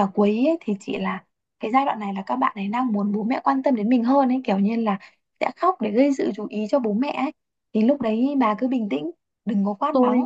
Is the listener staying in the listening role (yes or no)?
no